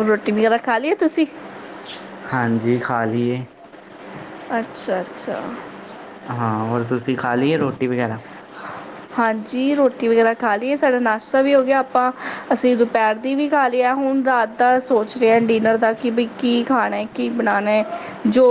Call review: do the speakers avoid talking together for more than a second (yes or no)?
yes